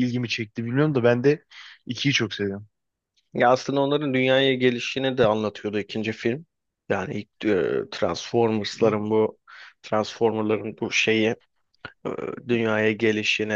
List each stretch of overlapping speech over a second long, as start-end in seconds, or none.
none